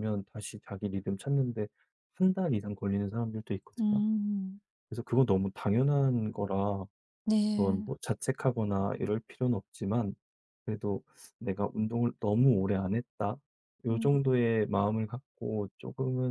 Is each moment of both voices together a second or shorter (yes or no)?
yes